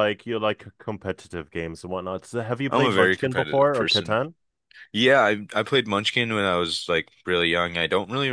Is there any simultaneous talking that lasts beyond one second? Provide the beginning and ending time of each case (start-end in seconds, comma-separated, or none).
2.7-4.2